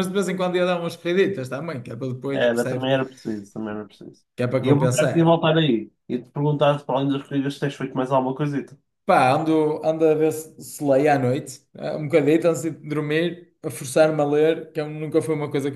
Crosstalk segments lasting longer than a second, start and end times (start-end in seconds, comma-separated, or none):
none